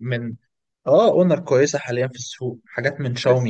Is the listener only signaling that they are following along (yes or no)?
no